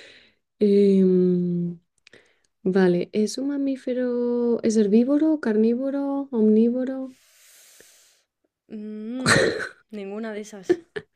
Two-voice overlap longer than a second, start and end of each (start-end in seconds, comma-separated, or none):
none